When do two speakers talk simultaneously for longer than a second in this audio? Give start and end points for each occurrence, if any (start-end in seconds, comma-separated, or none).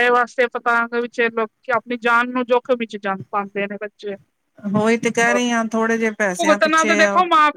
4.8-6.9